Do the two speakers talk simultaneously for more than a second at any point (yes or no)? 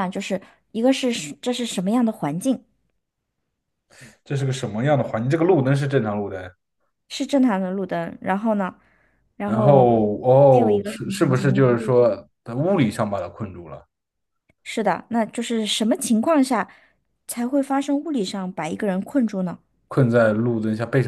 yes